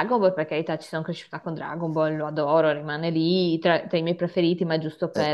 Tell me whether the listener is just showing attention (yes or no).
no